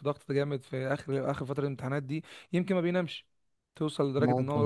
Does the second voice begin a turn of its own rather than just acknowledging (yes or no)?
no